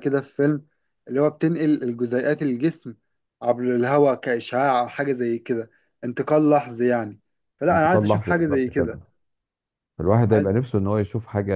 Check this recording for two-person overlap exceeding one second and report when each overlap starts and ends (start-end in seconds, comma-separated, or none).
7.7-9.0